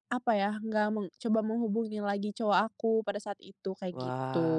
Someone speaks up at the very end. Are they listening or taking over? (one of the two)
taking over